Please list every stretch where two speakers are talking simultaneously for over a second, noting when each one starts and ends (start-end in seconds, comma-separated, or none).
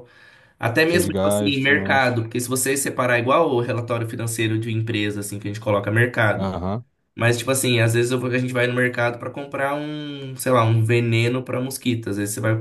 0.9-2.2